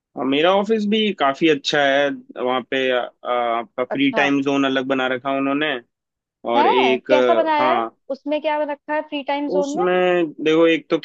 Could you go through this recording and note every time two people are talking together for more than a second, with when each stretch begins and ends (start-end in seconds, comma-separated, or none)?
6.6-8.0